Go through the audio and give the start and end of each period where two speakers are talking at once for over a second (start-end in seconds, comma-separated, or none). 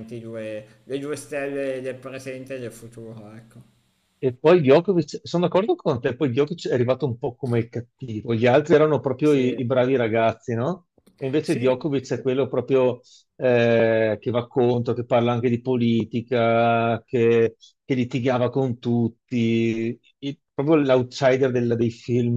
none